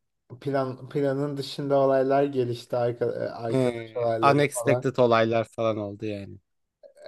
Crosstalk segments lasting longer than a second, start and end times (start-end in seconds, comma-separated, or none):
3.5-4.9